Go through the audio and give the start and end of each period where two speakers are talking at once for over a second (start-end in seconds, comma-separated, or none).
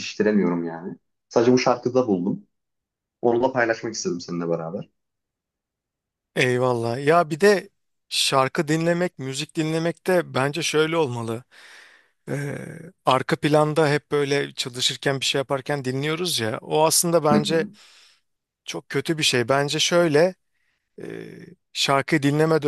none